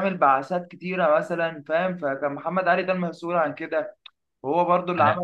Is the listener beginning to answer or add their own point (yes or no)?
no